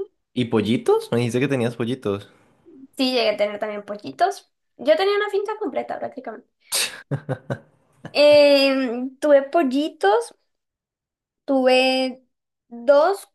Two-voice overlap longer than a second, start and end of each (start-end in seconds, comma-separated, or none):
none